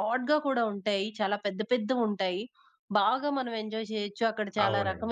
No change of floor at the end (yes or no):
yes